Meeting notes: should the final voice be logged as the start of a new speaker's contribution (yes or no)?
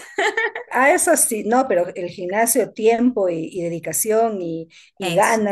no